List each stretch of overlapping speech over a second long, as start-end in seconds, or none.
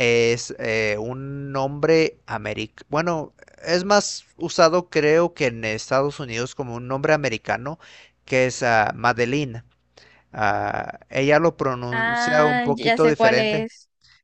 11.9-13.7